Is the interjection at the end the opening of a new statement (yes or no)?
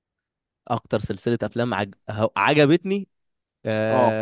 no